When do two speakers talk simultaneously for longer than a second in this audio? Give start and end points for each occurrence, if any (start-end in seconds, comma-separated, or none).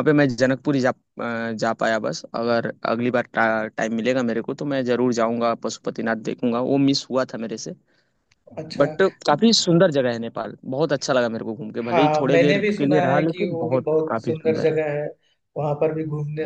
11.9-14.8